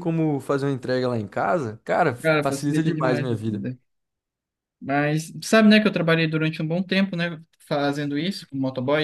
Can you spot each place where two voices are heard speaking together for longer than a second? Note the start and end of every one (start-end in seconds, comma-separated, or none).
2.2-3.6